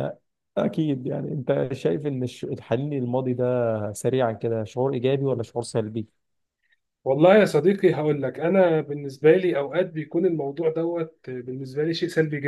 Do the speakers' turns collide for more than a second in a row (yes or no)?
no